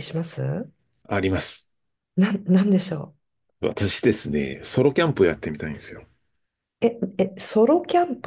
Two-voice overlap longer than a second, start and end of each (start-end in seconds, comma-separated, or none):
none